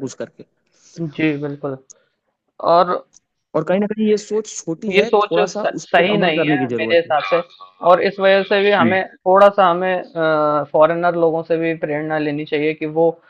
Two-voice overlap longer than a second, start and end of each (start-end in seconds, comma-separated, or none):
4.9-7.1